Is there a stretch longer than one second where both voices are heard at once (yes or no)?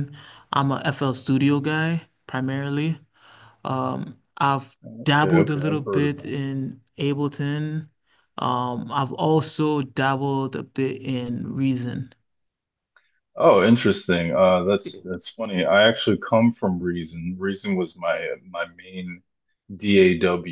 yes